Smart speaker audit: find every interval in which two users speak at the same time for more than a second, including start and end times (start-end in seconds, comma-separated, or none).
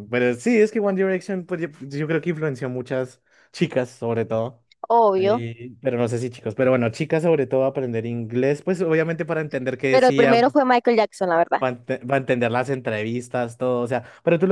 none